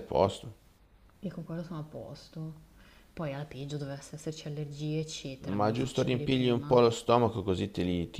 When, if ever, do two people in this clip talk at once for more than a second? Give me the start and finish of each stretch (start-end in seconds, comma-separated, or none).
5.4-6.8